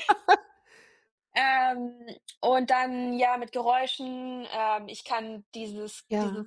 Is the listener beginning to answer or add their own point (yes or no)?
no